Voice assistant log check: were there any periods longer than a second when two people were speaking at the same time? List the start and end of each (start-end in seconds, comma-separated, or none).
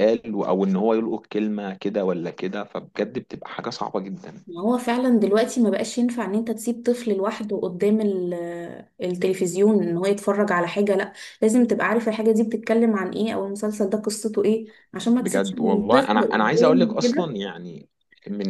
15.2-17.4